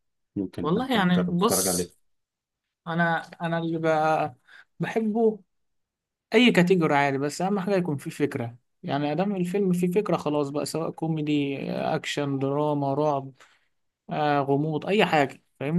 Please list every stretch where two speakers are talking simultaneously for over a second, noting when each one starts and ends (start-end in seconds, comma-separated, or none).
0.6-1.9